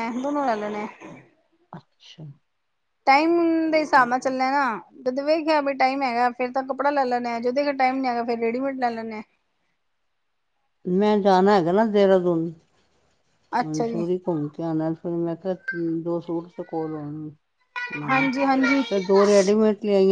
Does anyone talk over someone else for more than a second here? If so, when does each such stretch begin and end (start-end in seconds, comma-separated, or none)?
none